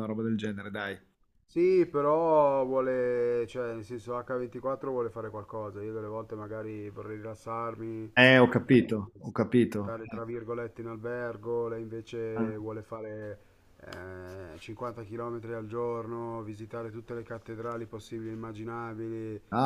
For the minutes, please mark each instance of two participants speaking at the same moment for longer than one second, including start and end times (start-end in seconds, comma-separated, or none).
none